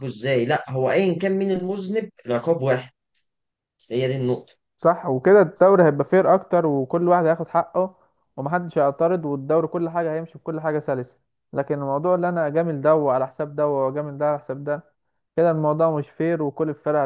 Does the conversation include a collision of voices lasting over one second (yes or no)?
no